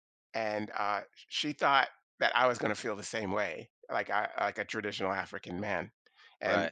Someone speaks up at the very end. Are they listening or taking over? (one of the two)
listening